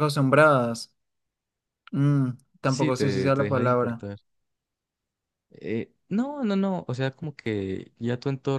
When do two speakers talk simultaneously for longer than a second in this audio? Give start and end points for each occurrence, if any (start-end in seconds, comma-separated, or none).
2.6-4.0